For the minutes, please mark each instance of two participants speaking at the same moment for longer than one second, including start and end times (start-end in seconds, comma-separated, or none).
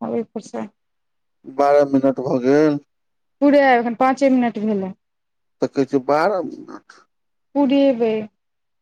none